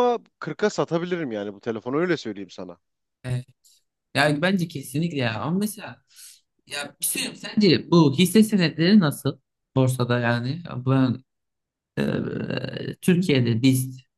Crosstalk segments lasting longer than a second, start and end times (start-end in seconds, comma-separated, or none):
none